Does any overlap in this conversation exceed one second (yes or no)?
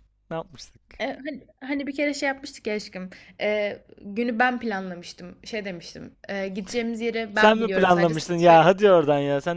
yes